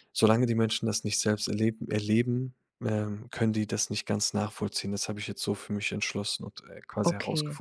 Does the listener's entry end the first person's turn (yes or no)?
yes